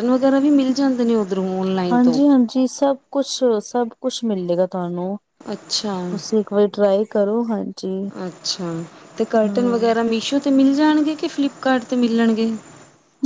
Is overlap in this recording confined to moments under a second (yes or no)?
yes